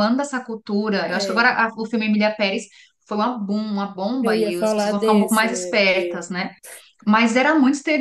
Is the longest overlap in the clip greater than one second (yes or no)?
yes